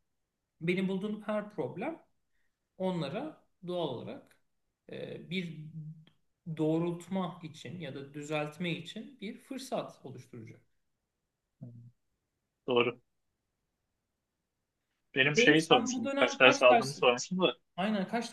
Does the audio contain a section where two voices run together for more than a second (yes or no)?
yes